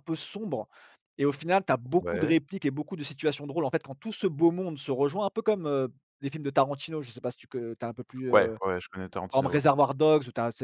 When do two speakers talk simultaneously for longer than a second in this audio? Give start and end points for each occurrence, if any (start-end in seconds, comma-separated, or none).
none